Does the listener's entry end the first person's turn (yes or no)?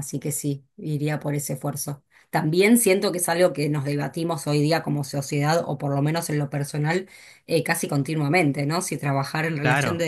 no